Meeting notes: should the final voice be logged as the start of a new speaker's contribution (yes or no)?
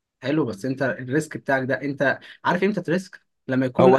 yes